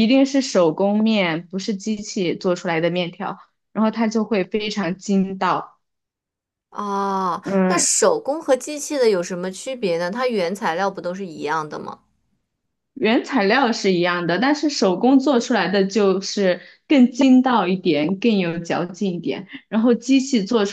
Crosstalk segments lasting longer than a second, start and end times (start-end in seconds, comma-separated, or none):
none